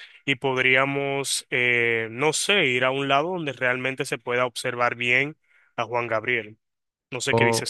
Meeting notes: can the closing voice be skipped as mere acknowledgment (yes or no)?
no